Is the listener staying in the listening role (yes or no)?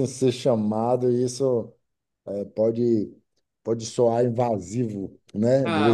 no